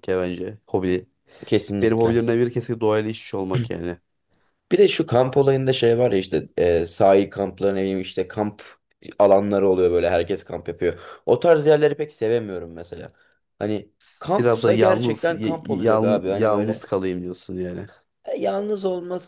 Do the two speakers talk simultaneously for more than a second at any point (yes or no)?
yes